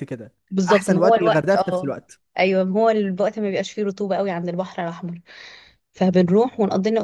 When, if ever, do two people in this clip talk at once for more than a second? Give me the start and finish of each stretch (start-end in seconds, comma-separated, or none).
0.7-1.9